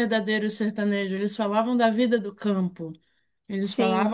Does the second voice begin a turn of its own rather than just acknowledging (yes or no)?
no